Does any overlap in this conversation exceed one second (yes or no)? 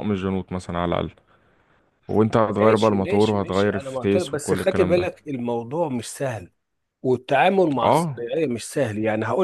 yes